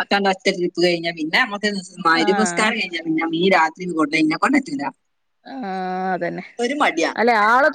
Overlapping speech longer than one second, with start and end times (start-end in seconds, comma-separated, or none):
none